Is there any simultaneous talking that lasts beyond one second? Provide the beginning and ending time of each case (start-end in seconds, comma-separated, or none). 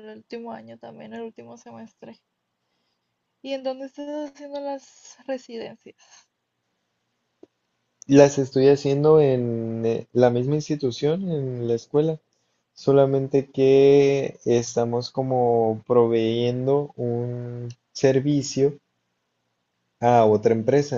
none